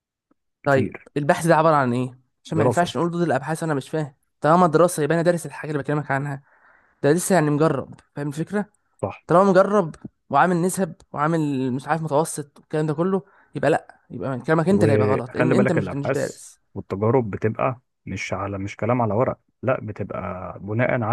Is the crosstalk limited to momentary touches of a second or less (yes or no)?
no